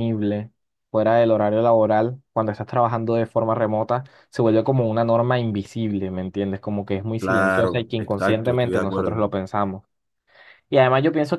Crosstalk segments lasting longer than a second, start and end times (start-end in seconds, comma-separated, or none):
7.2-9.2